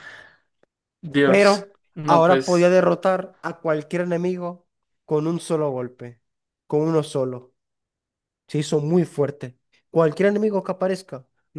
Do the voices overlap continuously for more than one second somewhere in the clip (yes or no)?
yes